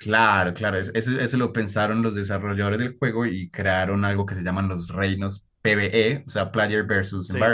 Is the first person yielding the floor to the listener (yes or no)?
no